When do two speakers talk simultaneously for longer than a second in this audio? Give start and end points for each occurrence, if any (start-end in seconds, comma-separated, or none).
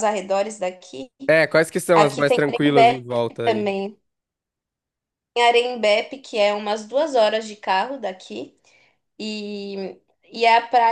1.9-3.7